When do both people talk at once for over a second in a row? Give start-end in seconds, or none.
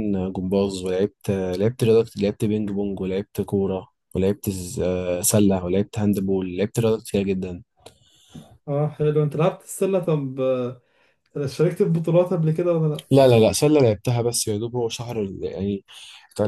none